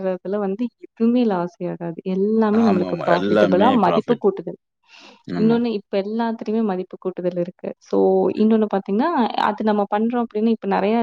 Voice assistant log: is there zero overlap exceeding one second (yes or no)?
no